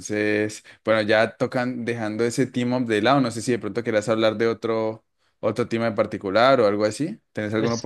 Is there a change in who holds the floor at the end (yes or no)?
yes